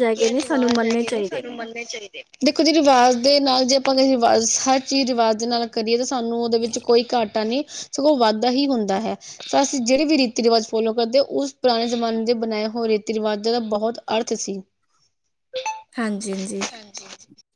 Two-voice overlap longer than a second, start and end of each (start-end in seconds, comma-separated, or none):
none